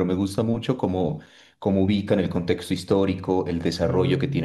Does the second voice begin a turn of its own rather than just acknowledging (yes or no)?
no